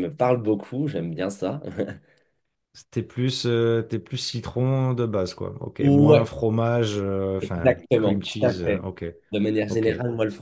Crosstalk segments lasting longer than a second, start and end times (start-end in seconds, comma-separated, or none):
7.4-8.8